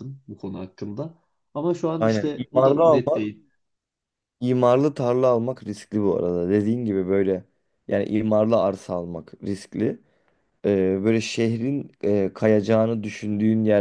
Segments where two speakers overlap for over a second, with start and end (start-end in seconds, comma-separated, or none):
2.0-3.3